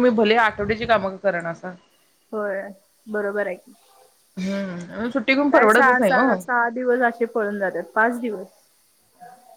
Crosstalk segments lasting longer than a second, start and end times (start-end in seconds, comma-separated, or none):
none